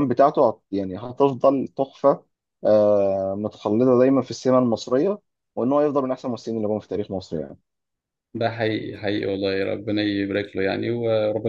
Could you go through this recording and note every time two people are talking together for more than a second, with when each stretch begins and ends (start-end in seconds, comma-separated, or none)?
none